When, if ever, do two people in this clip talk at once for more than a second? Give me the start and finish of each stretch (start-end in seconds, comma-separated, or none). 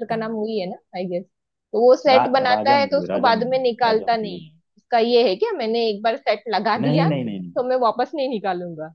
2.1-4.4